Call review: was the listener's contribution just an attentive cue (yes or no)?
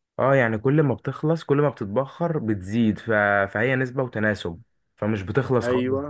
no